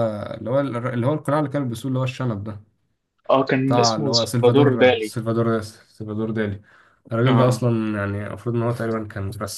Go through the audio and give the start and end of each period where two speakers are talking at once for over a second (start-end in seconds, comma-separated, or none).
3.6-5.2